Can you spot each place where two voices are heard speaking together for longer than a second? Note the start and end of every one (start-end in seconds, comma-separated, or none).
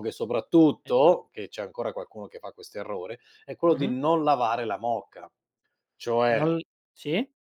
none